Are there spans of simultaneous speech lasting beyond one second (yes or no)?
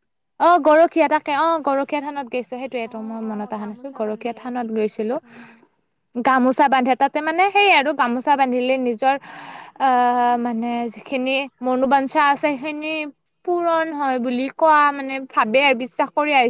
yes